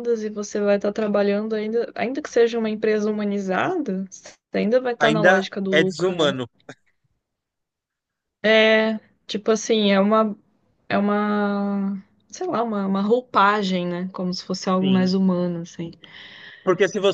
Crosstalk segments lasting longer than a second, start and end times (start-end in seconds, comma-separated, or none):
5.0-6.3